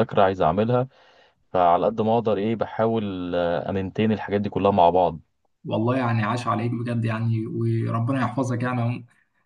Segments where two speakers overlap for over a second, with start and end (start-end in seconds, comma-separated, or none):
none